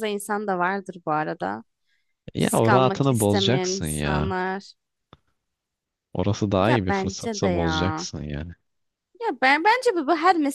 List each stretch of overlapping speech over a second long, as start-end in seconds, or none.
2.4-4.3, 6.6-8.1